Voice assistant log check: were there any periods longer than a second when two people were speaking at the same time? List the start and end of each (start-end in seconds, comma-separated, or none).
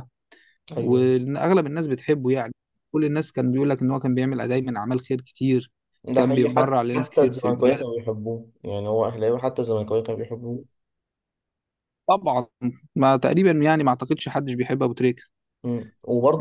6.1-7.8